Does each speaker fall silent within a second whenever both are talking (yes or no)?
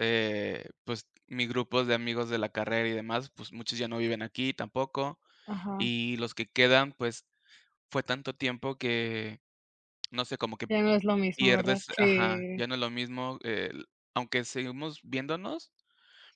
no